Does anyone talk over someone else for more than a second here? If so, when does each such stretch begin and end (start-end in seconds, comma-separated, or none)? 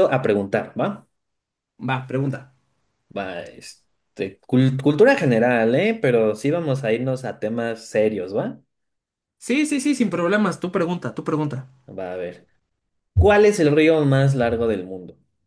none